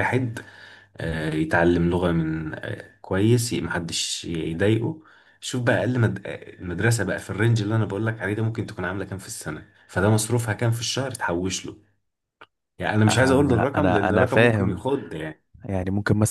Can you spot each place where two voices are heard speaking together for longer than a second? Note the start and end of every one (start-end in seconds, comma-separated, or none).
13.1-14.8